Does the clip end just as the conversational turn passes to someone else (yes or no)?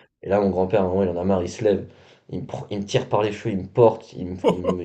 no